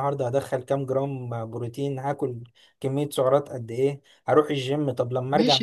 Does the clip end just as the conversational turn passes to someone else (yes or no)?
yes